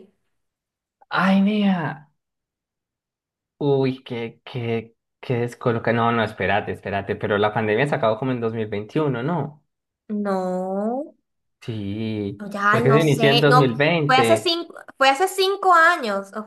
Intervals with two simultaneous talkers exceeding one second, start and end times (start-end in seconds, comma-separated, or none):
12.4-14.6